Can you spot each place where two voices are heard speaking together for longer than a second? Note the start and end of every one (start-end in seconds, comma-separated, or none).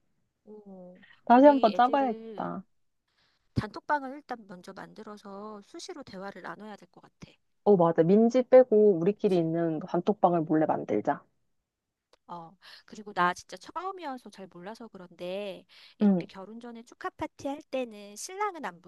1.2-2.5